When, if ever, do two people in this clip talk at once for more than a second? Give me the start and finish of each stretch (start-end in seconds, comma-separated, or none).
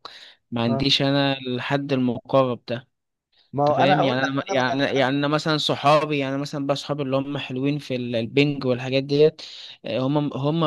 3.6-5.2